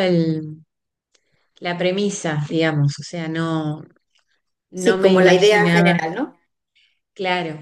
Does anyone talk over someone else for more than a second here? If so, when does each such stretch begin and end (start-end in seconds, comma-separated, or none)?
4.8-6.0